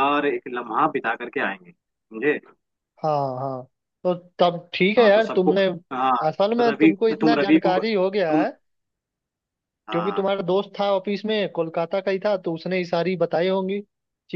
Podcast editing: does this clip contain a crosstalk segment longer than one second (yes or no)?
yes